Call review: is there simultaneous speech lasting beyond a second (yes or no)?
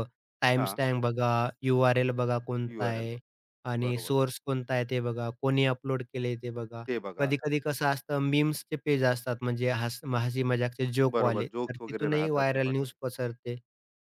yes